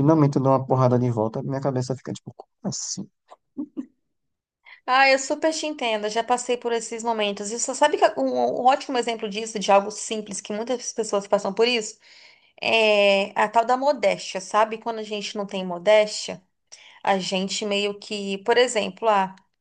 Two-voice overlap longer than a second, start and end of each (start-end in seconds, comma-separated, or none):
none